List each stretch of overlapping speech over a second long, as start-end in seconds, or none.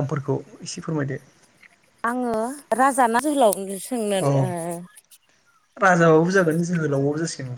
none